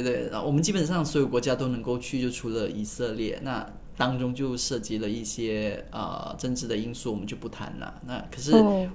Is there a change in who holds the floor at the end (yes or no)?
no